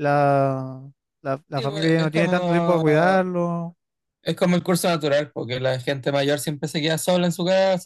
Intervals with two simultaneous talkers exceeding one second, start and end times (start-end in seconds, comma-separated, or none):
1.5-2.8